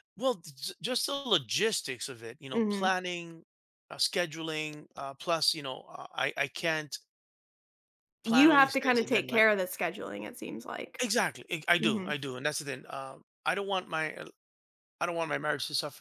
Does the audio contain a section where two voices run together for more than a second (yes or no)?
yes